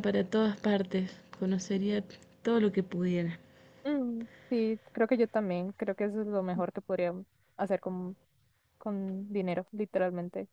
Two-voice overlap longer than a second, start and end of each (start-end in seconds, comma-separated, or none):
none